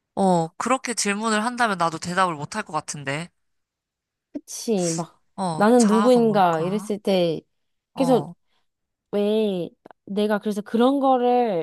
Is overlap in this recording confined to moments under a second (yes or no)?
no